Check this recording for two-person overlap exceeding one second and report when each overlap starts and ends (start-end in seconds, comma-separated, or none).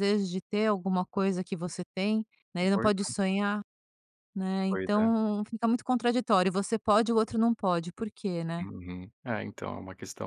none